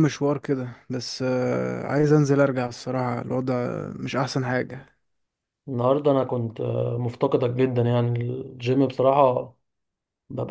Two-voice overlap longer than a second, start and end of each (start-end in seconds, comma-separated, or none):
none